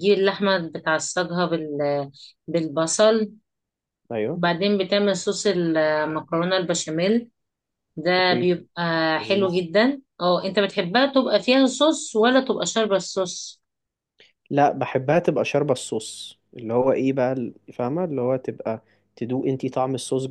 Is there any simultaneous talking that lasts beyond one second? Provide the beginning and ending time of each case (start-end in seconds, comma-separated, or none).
none